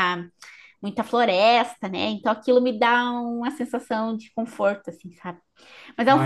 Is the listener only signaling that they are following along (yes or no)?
yes